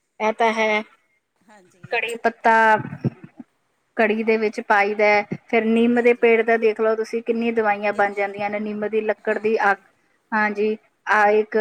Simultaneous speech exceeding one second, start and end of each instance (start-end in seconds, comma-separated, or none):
none